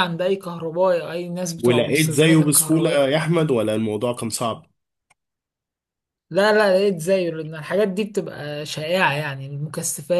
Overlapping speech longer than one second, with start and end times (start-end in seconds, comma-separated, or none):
1.6-3.2